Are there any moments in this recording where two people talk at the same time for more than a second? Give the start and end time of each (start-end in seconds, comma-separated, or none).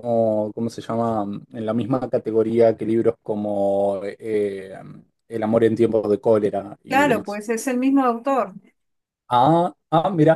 none